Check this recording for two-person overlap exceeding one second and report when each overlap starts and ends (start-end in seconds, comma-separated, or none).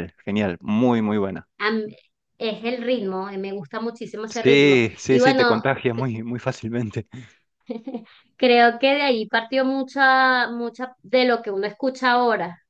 4.3-6.1